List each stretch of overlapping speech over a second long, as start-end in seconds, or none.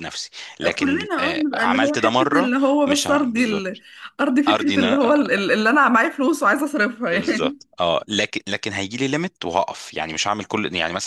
0.8-3.7